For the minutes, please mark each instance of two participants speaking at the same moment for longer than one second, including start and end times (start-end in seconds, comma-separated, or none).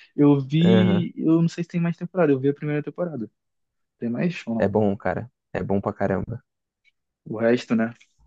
none